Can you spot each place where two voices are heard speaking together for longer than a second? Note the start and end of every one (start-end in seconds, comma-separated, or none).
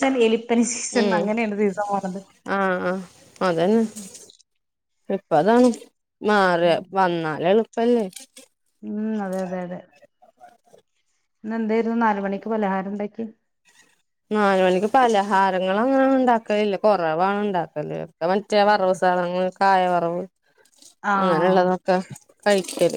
none